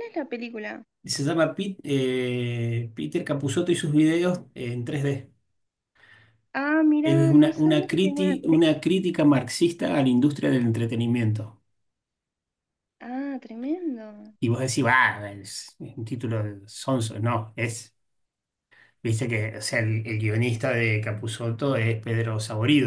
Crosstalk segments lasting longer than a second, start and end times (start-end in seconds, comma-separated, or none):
7.0-8.7